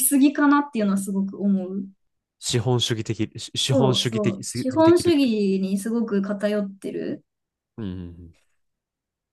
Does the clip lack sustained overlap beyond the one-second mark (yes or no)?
no